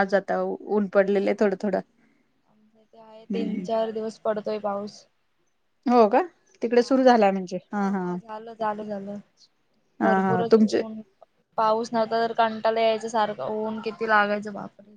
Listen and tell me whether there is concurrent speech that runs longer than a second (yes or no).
no